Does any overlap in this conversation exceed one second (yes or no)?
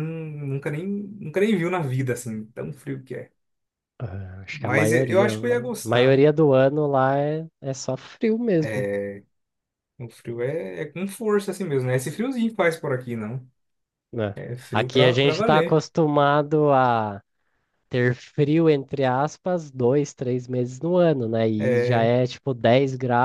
yes